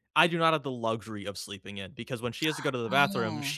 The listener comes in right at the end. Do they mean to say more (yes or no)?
no